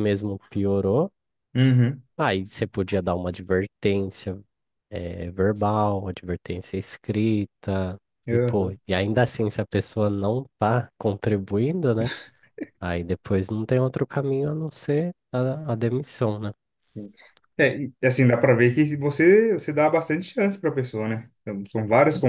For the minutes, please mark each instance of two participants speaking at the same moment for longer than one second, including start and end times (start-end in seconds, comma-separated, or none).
none